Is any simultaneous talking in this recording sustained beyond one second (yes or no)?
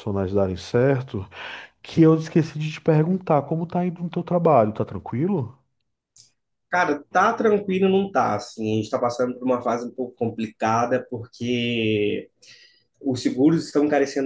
no